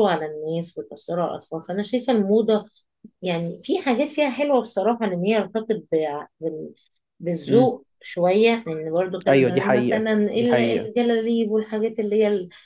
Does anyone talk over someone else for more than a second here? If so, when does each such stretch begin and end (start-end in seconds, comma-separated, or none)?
9.3-10.9